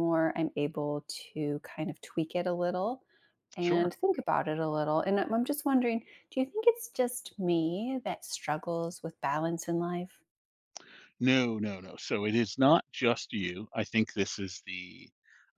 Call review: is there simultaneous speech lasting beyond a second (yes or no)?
no